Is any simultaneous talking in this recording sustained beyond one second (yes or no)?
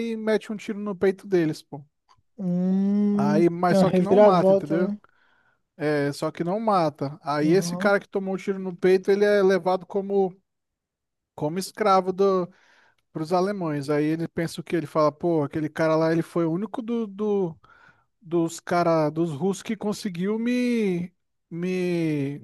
yes